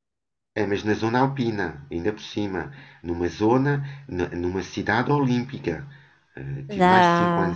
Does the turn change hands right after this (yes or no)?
no